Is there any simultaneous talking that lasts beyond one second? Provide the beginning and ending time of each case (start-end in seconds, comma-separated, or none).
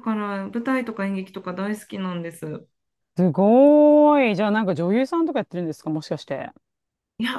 none